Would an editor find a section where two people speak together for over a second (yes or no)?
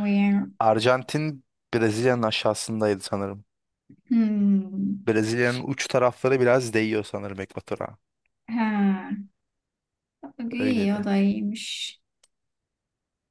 no